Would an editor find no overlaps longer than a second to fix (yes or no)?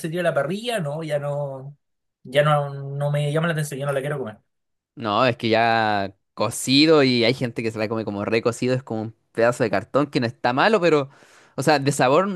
yes